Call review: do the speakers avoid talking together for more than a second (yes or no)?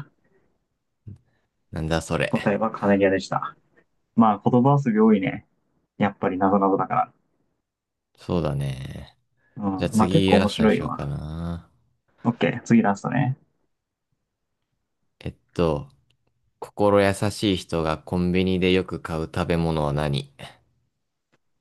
no